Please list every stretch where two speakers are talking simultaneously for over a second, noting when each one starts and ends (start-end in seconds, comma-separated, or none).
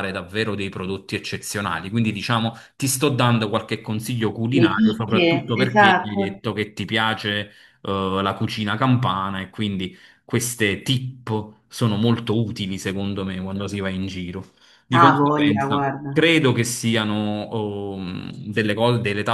4.5-6.2, 14.9-16.2